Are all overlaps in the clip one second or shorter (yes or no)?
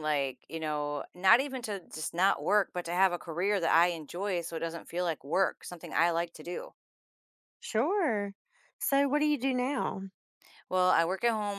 yes